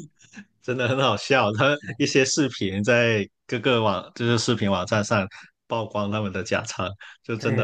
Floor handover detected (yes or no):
no